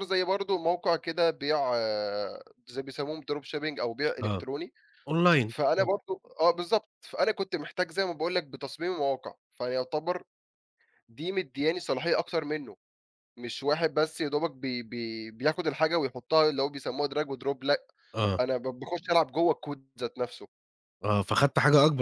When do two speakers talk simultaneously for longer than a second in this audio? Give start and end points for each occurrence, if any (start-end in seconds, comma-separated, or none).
none